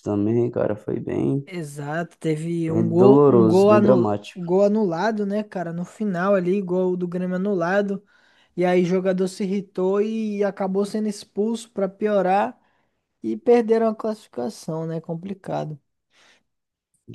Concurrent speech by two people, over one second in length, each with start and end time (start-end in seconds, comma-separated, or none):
2.7-4.5